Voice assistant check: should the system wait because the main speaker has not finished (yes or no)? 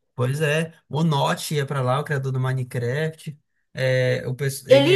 yes